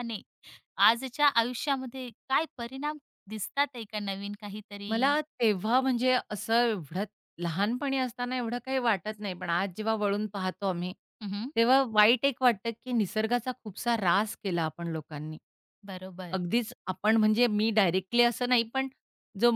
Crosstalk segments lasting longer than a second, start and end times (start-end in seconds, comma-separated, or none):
none